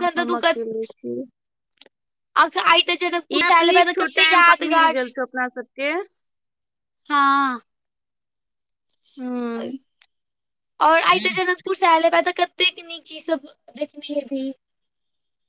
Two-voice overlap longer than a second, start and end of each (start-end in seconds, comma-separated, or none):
3.3-5.0